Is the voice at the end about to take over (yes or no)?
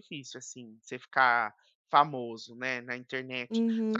yes